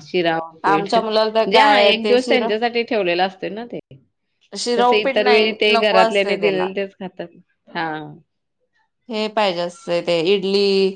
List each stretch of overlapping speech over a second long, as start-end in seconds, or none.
0.7-2.5, 4.8-6.7